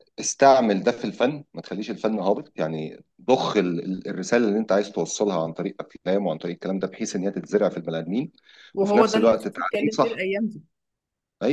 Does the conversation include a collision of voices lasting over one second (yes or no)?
yes